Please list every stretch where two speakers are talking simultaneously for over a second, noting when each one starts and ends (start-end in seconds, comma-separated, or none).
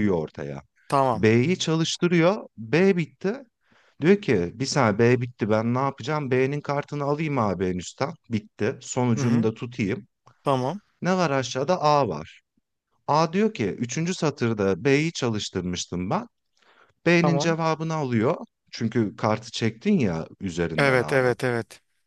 none